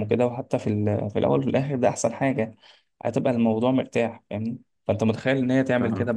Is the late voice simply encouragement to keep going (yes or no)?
yes